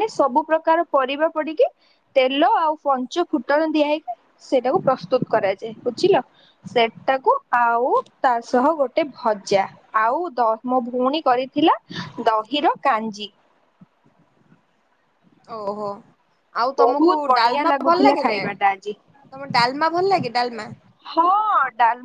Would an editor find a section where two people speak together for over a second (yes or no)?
yes